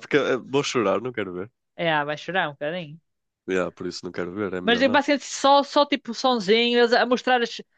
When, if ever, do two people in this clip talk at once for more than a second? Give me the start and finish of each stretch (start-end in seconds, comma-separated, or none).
none